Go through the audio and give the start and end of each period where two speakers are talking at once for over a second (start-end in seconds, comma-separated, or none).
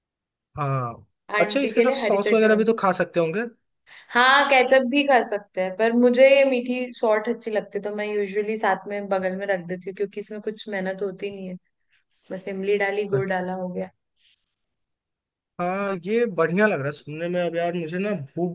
1.4-2.6